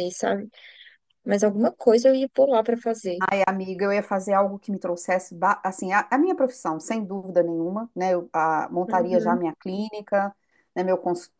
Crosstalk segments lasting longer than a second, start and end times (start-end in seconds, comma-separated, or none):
none